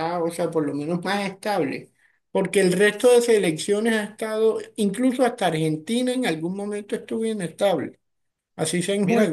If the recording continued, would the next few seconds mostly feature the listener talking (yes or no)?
yes